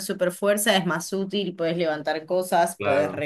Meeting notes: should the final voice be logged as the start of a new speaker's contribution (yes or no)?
no